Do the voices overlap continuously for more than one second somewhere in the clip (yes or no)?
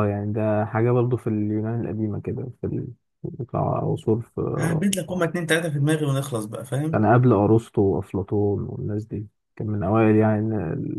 no